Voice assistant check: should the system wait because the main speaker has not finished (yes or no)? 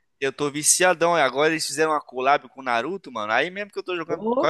yes